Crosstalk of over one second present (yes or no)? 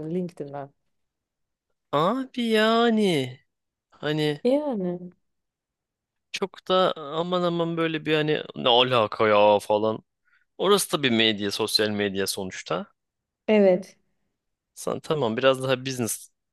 no